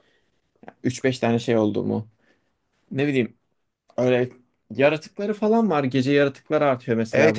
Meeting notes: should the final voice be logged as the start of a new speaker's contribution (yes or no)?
yes